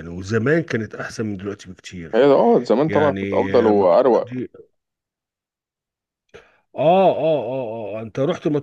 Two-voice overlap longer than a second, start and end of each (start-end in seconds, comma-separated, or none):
2.9-4.4